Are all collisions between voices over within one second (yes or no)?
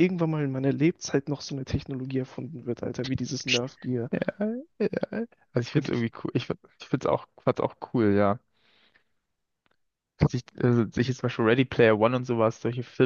yes